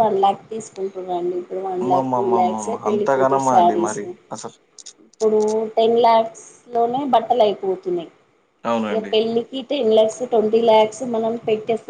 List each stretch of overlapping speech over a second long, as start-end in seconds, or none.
1.8-4.0